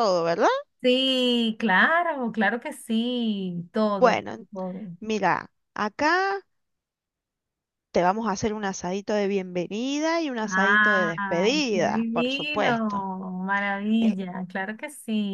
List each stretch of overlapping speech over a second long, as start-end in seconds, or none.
10.5-13.1